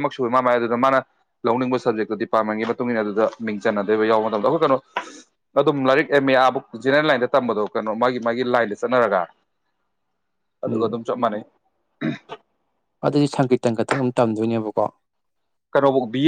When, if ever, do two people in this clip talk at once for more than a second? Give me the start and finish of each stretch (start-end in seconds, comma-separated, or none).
none